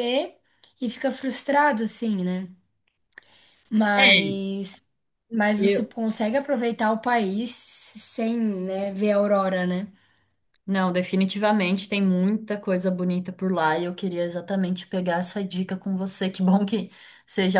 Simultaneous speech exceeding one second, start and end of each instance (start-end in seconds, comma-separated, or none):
none